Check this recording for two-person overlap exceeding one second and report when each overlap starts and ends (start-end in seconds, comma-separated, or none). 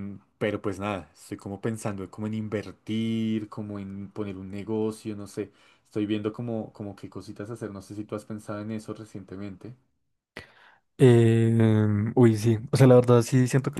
none